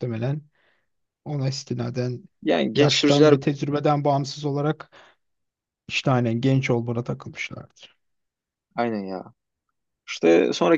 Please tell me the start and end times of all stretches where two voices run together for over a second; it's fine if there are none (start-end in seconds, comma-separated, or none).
none